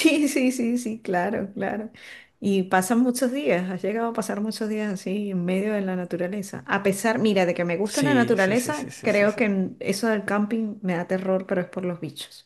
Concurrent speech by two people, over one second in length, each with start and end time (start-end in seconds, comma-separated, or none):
7.8-9.4